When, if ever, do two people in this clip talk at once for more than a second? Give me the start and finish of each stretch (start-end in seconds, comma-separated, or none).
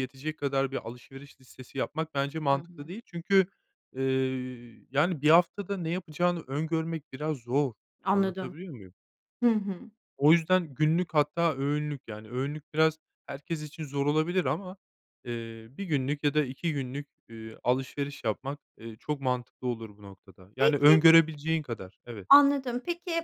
none